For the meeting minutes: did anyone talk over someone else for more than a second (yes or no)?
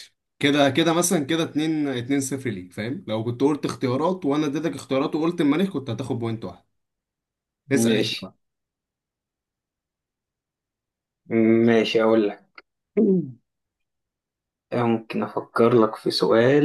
no